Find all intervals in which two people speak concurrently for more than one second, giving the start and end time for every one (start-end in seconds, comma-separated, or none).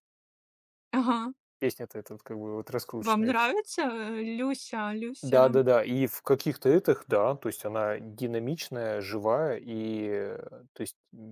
none